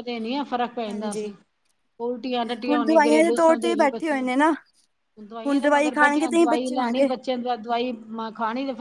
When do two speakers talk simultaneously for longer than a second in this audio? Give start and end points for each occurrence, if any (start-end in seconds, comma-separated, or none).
2.7-4.3, 5.3-7.1